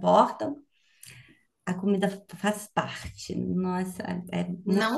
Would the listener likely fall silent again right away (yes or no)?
no